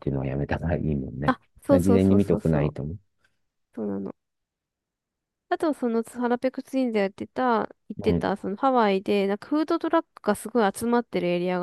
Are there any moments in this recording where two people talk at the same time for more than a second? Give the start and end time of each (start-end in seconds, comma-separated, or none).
1.3-2.7